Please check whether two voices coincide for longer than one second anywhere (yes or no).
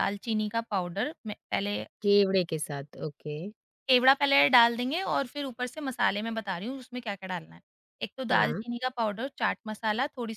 no